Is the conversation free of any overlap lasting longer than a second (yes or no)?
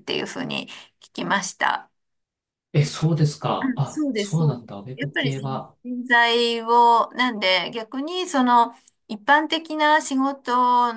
no